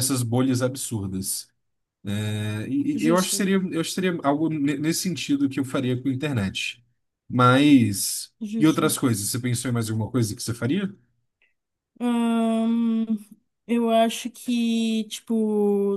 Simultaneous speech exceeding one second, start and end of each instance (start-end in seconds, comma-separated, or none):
none